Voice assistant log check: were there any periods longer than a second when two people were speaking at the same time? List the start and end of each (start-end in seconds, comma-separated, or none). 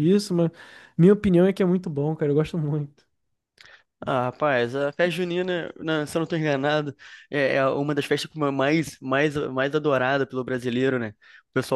none